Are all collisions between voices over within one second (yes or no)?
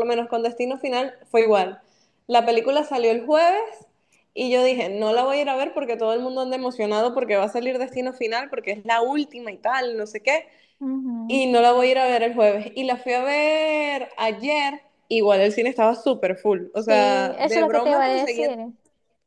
no